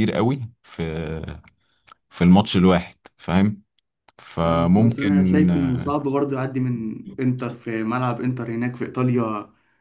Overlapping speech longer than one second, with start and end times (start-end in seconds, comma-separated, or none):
4.4-5.9